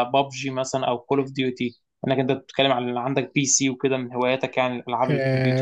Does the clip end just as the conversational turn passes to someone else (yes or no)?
yes